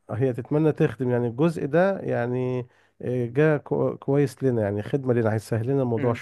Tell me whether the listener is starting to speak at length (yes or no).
yes